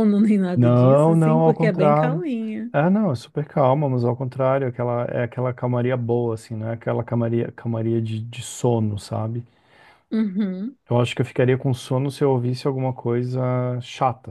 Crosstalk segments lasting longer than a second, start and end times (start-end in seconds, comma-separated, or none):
0.6-2.2